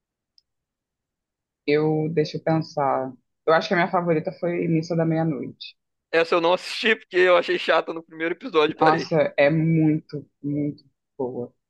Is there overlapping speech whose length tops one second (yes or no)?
no